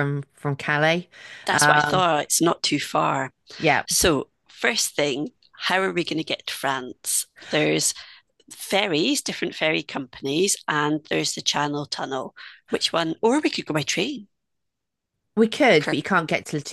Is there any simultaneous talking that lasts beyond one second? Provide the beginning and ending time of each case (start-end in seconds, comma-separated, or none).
none